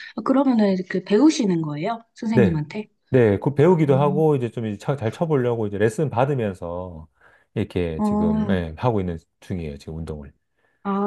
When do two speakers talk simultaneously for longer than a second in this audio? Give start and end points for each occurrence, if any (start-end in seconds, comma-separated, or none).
none